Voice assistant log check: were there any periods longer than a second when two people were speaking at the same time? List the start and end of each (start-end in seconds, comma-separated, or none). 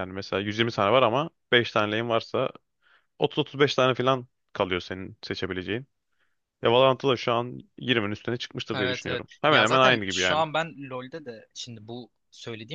8.7-10.4